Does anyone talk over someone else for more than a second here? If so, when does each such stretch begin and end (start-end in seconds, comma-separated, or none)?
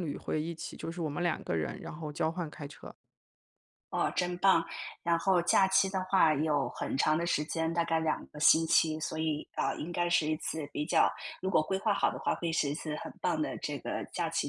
none